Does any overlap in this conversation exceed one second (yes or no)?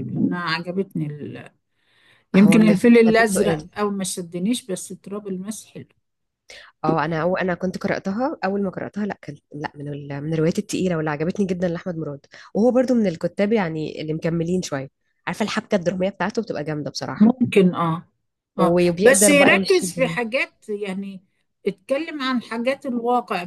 yes